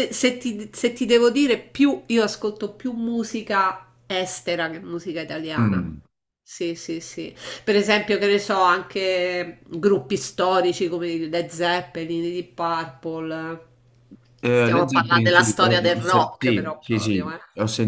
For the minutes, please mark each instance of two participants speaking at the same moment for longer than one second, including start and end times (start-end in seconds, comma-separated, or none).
14.5-17.4